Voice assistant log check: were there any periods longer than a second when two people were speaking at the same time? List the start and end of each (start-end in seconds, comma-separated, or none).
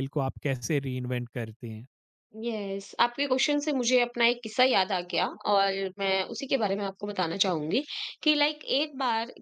none